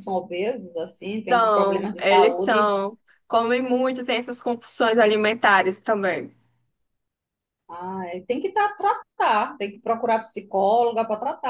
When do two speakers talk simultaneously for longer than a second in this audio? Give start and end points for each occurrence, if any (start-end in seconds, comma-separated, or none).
1.3-2.8